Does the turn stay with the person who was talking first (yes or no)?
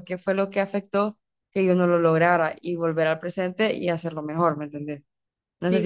no